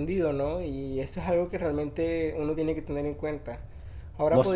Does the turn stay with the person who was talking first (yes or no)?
yes